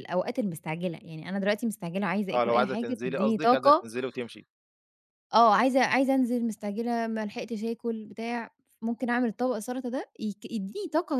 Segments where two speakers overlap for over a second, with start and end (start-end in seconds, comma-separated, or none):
2.3-3.9